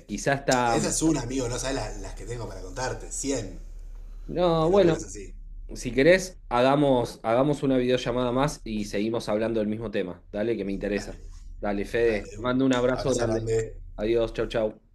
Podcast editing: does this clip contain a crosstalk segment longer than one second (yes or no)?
yes